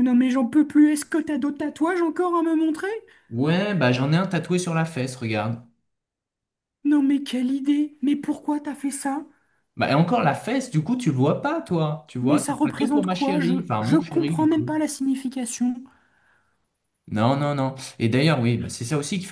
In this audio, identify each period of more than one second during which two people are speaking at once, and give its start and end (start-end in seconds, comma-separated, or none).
12.2-14.7